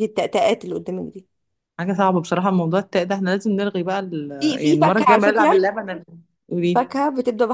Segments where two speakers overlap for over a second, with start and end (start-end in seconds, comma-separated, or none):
4.4-5.6